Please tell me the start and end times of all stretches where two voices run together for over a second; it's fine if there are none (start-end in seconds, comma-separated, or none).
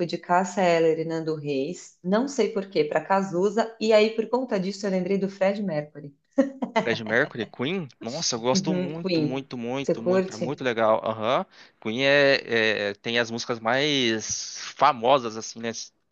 8.5-10.6